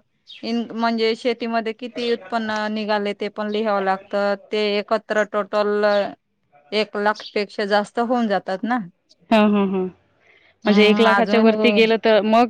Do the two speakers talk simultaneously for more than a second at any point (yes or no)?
yes